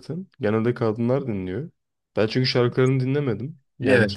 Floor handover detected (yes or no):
no